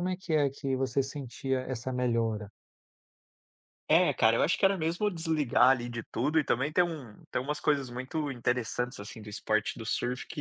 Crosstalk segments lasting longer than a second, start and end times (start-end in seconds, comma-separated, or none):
none